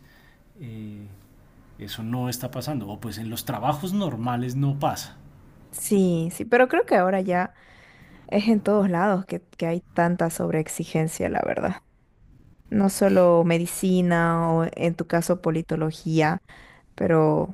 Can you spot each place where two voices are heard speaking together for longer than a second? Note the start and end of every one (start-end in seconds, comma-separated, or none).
none